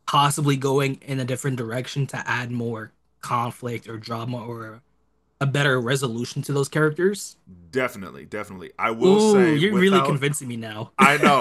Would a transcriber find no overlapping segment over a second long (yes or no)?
no